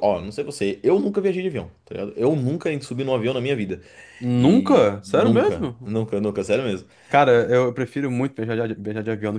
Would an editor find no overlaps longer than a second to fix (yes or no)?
no